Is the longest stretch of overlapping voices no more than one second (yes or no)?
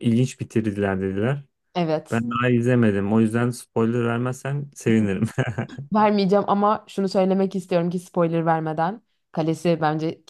yes